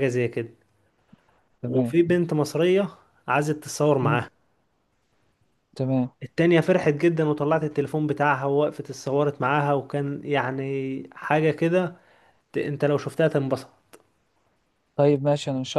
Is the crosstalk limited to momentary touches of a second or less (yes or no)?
yes